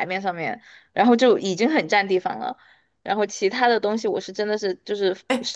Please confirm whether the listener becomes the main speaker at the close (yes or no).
no